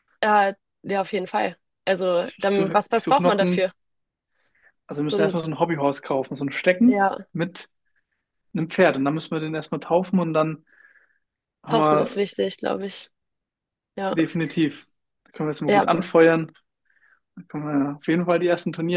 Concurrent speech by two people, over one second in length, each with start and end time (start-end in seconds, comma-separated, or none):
2.2-3.7